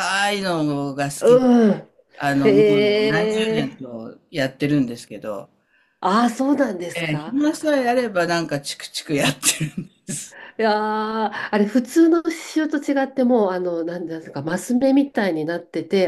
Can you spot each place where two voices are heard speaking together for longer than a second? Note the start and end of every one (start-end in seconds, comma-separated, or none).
2.4-3.7